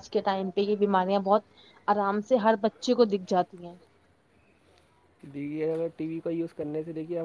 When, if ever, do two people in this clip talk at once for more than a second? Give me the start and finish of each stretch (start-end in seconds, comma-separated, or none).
none